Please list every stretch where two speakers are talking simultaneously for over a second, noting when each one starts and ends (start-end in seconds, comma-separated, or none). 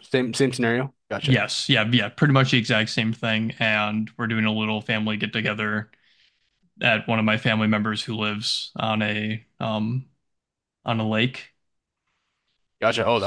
none